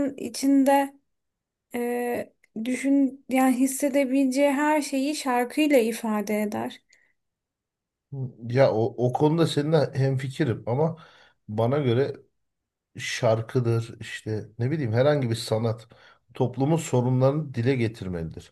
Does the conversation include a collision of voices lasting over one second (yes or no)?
no